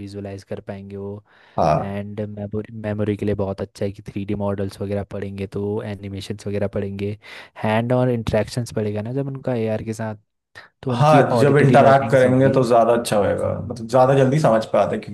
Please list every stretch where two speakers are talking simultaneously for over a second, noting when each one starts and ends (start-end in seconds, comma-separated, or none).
10.9-12.6